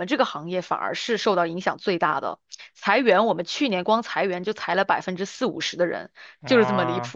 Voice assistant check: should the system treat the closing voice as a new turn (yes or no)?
no